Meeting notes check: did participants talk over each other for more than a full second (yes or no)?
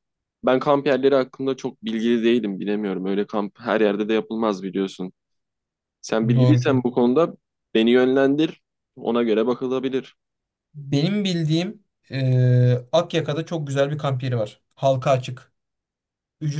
no